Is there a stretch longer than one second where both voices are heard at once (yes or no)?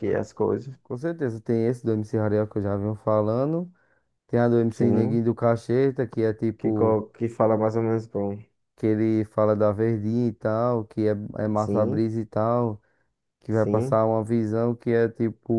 no